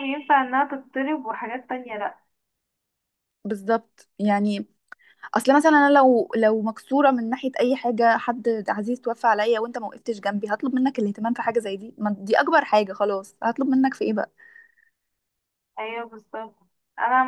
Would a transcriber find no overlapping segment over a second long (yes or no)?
yes